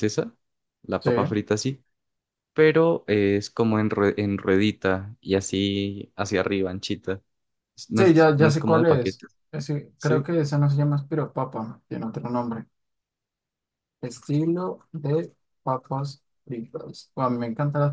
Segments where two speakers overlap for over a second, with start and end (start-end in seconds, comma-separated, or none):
8.0-9.3